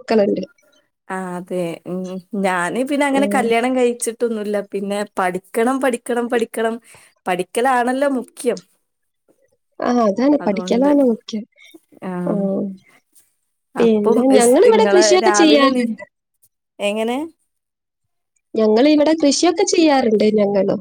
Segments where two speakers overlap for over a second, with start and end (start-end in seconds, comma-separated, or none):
13.8-15.8